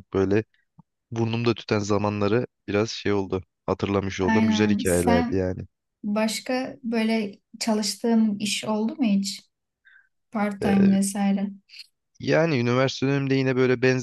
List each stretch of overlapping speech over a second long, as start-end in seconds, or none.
4.2-5.5